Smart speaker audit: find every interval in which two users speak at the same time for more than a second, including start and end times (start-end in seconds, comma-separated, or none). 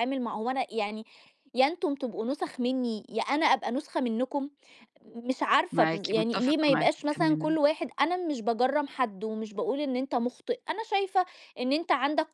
5.7-7.6